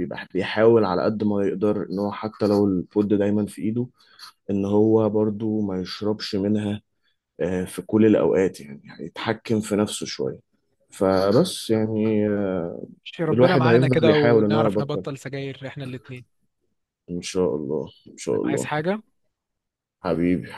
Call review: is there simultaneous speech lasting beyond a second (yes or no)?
yes